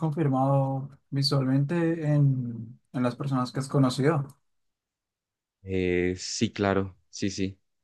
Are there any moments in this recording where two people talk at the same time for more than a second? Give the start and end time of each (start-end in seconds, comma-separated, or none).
none